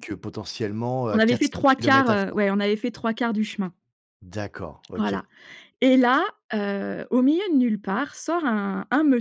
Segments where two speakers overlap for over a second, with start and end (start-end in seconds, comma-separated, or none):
1.1-2.4